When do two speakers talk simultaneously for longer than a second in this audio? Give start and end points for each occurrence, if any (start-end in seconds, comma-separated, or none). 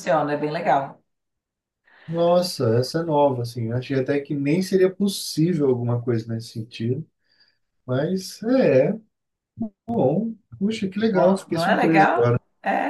11.1-12.4